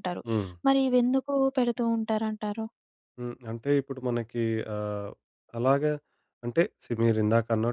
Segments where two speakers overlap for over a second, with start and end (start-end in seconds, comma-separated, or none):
none